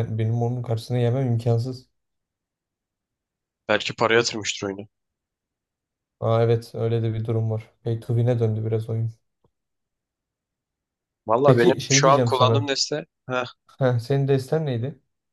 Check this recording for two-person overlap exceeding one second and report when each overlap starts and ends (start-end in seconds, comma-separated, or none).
11.4-12.7